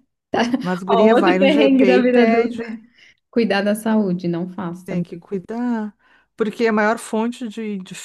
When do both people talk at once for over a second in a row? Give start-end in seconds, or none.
0.9-2.6